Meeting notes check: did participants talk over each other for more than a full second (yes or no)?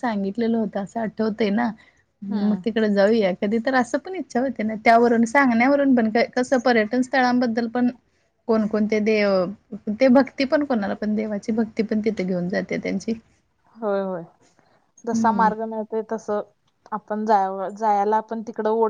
no